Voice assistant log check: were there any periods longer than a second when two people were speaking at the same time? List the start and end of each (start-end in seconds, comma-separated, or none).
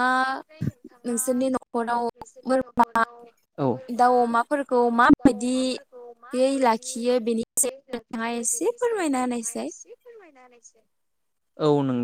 8.0-9.7